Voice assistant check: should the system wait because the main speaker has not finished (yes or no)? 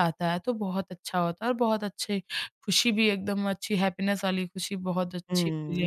no